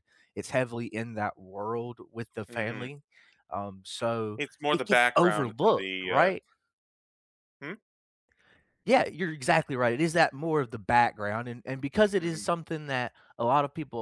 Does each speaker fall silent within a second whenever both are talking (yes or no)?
no